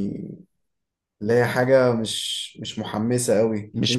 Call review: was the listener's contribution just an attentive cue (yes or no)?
yes